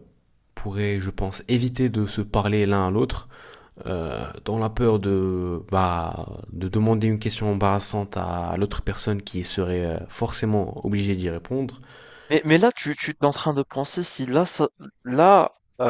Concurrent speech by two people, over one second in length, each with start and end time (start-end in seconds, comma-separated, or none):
none